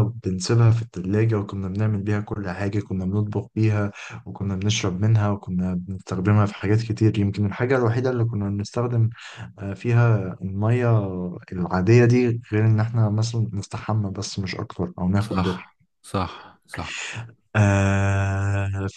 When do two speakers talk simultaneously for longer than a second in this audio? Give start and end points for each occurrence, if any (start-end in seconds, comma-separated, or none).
none